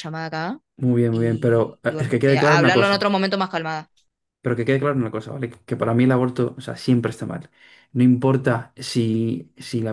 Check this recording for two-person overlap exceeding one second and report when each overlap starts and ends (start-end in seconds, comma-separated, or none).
1.1-3.1